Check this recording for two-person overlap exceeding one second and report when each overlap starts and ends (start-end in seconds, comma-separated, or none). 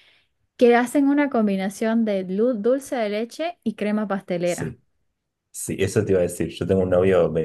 none